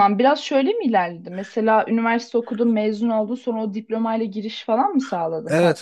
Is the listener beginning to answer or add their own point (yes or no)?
yes